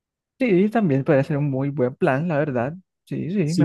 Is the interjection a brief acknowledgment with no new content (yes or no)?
no